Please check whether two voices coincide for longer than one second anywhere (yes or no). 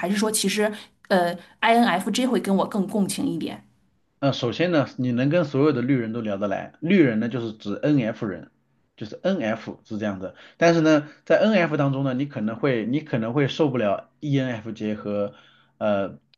no